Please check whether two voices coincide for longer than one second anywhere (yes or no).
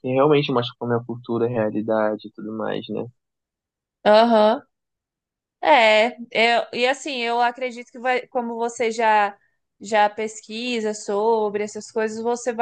no